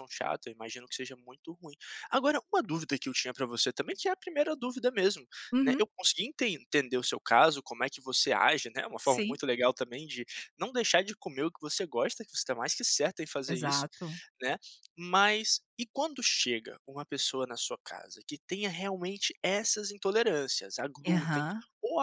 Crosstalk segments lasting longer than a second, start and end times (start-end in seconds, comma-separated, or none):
none